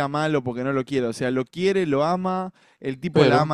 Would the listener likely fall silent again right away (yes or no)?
yes